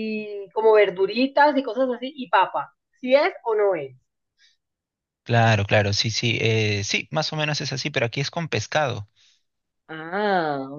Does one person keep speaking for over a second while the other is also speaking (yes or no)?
no